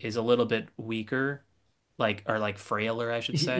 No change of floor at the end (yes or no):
no